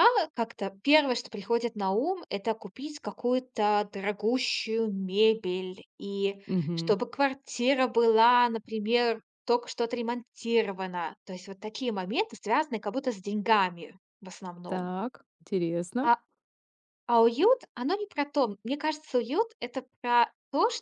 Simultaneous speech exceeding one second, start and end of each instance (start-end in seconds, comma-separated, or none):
none